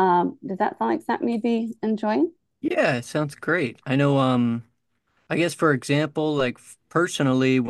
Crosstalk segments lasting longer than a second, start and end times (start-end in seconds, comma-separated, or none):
none